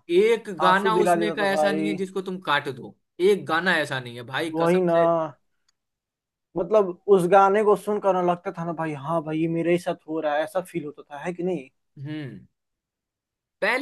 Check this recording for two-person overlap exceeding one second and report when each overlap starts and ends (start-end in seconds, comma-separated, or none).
0.7-2.0